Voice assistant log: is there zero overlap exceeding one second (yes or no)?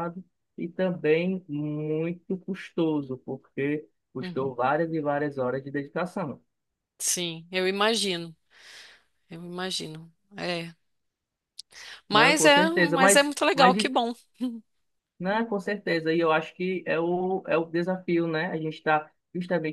no